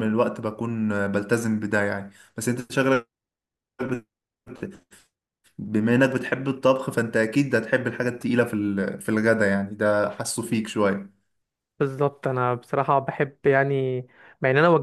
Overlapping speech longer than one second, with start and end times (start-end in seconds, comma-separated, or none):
none